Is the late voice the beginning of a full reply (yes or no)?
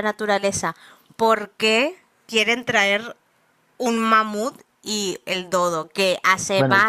no